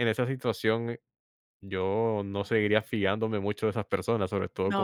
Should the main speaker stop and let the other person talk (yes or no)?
no